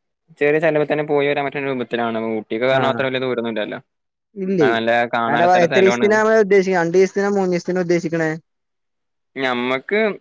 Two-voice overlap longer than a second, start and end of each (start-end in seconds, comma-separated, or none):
none